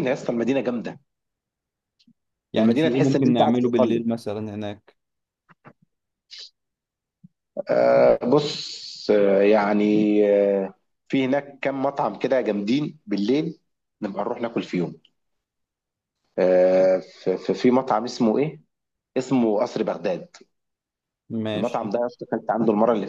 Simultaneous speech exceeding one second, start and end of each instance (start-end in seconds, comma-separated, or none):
2.6-4.0